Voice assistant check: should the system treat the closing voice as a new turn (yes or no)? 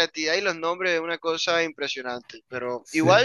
no